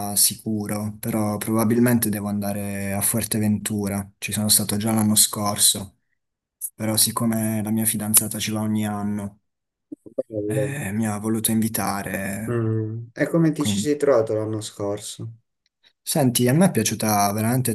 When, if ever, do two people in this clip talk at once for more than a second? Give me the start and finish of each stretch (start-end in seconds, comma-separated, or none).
none